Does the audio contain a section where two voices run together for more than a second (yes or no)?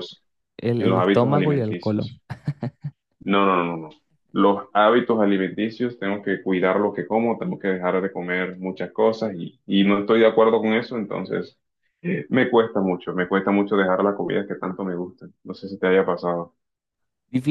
yes